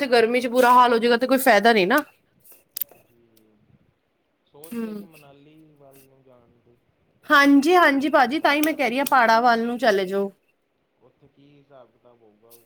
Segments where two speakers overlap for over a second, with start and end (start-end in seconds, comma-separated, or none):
7.3-9.2